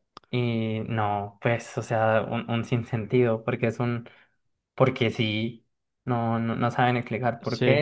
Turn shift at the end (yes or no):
no